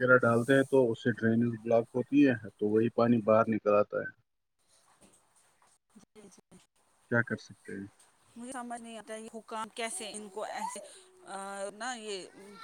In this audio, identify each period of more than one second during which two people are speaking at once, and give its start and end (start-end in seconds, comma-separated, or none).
none